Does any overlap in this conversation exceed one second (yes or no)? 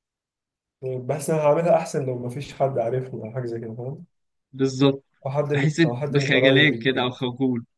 yes